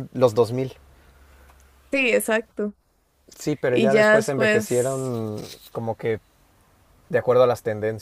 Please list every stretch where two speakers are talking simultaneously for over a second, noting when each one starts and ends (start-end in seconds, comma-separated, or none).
3.7-5.0